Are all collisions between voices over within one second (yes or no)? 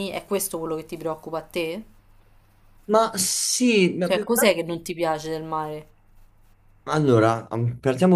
yes